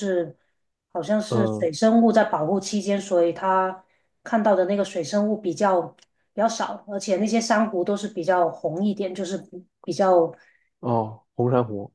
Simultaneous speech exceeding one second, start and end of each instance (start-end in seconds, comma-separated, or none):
none